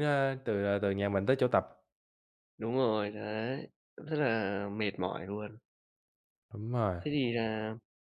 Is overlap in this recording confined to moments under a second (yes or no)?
yes